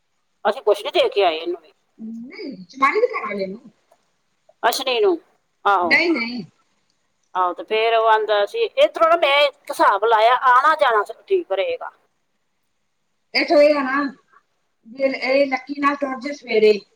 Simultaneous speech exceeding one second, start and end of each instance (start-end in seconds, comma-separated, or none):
none